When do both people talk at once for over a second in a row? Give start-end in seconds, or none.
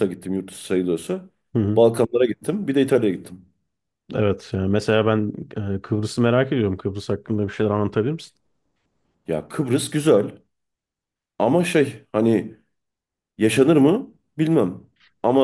none